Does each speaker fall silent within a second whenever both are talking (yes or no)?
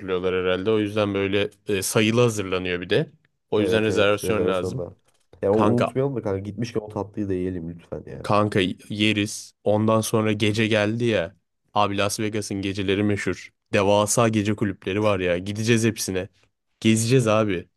no